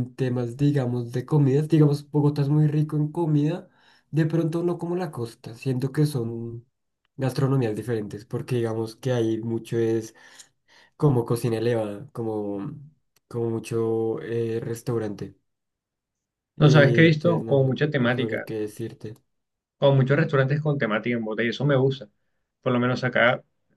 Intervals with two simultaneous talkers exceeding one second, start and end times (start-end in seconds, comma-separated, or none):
16.6-18.5